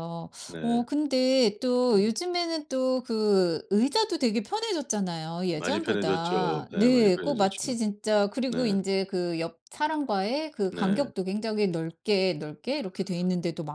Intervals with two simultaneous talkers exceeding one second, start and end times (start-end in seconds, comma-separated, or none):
5.5-7.8